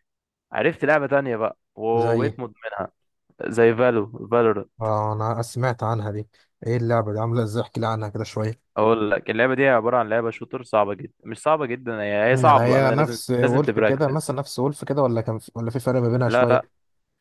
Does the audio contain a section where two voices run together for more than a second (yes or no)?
yes